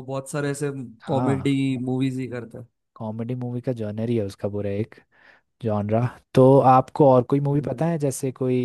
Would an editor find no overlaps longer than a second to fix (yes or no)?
yes